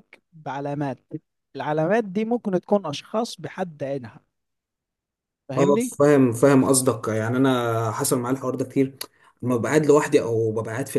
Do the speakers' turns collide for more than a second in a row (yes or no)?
no